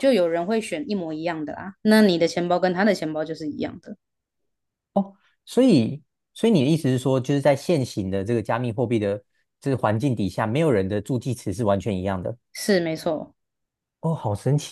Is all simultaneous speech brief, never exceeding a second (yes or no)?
yes